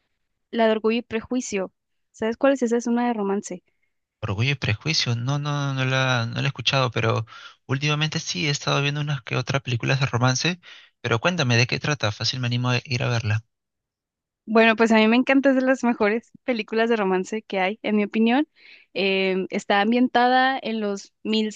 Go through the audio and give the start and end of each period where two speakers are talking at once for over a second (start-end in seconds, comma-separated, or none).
none